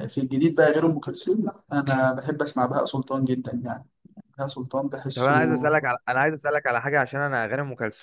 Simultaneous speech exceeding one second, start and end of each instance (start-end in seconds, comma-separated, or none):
none